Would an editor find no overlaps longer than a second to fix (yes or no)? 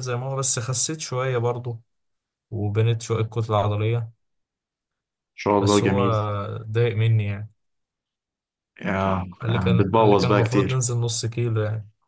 no